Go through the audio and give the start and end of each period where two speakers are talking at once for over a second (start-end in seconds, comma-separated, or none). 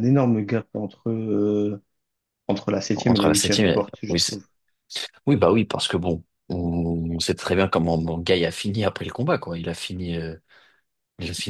3.0-4.4